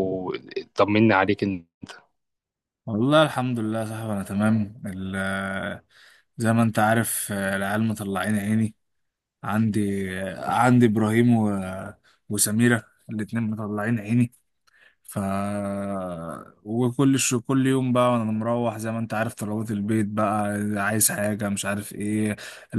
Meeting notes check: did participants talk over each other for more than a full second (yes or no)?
no